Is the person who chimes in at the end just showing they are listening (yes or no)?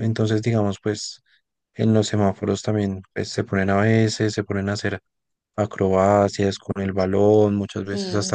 no